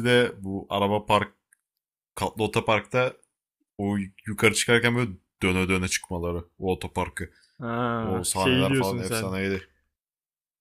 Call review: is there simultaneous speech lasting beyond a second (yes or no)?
yes